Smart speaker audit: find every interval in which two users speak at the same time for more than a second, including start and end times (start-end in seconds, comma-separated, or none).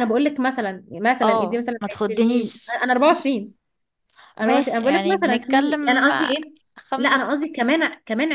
1.2-2.7, 4.4-6.1